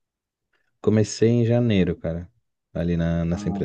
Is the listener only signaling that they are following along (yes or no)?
no